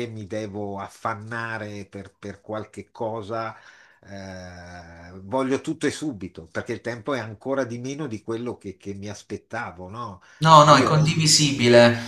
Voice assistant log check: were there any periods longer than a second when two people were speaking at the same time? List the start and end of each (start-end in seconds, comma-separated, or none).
none